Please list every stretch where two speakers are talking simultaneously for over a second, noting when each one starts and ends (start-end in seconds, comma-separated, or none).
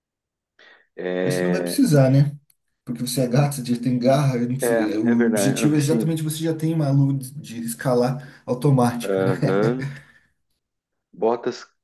4.6-6.2